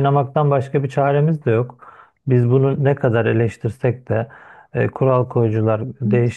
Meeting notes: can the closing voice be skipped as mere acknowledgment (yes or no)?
yes